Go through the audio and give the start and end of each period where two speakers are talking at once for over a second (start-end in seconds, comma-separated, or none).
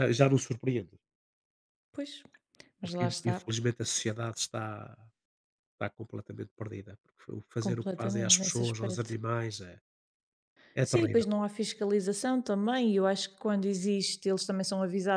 7.6-9.2